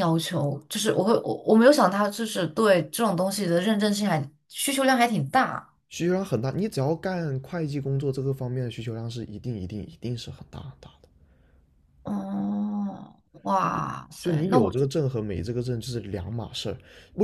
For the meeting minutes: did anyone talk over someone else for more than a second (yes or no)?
no